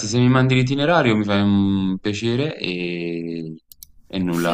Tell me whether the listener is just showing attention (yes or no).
no